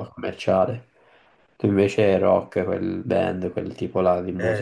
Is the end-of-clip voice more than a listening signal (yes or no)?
yes